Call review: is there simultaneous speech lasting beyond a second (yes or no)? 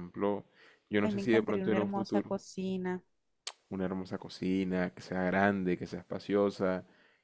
yes